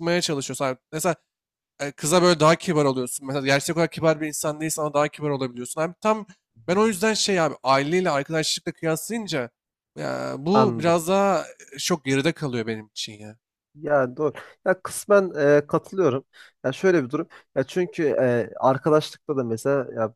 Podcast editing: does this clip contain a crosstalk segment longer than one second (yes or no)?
no